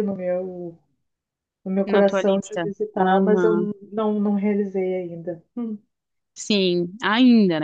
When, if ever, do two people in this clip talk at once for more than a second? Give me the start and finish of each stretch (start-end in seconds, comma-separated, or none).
1.9-3.5